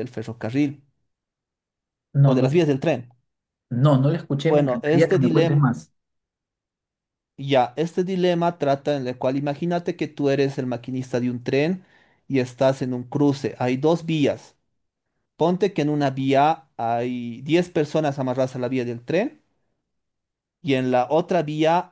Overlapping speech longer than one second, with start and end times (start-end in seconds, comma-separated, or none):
4.4-5.7